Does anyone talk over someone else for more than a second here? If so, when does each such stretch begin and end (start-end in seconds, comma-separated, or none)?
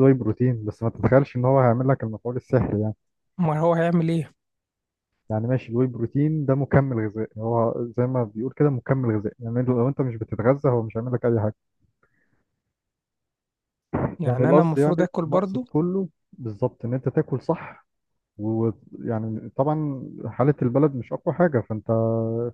14.3-15.6